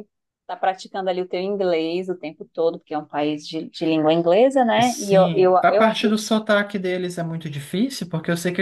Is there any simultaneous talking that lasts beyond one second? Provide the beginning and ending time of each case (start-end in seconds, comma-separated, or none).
4.8-6.2